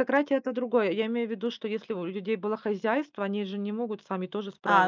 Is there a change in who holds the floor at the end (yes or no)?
yes